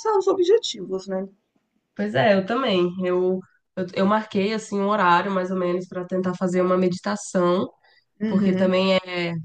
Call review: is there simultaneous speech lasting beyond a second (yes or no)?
no